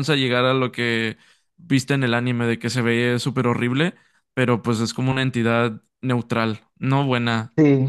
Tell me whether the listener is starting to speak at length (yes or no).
yes